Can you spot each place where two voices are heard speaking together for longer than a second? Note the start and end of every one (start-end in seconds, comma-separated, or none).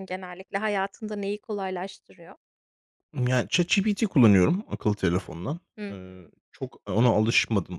none